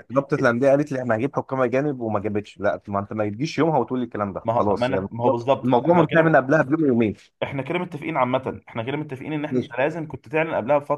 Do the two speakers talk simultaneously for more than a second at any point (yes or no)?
yes